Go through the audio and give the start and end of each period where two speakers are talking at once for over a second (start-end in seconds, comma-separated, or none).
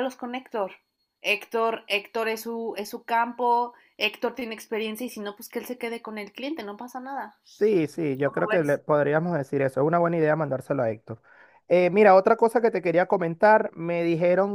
none